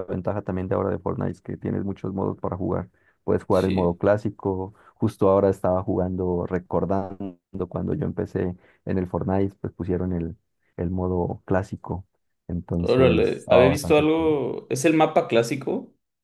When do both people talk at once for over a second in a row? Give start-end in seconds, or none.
12.8-14.3